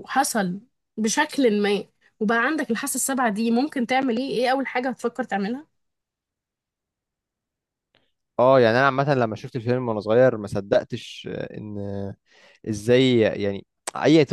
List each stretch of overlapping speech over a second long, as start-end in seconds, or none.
none